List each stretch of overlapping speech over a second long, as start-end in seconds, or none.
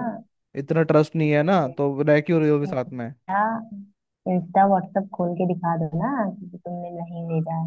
none